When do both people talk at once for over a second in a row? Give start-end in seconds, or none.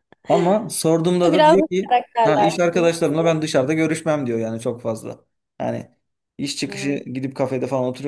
1.3-3.0